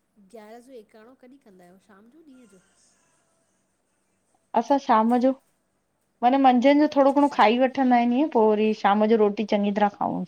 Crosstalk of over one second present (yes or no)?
no